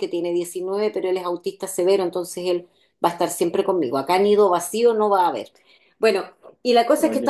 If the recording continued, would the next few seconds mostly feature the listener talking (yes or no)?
no